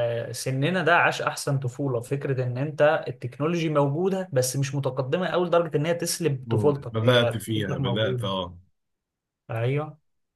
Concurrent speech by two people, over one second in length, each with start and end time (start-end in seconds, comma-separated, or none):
6.4-8.3